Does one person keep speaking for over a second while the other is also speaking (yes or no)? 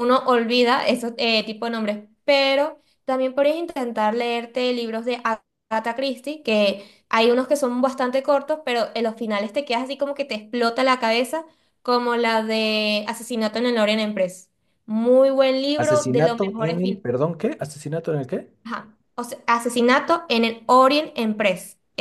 yes